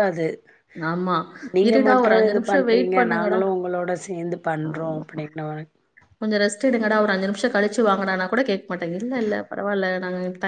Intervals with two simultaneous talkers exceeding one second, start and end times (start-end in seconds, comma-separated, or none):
1.7-3.4